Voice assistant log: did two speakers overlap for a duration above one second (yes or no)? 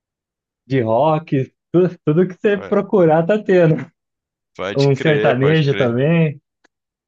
yes